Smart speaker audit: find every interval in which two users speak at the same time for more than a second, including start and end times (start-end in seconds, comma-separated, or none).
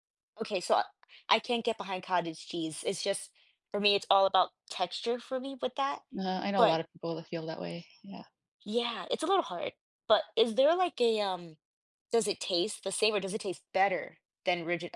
none